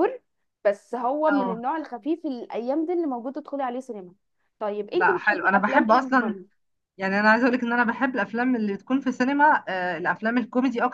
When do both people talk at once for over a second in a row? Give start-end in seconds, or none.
4.9-6.3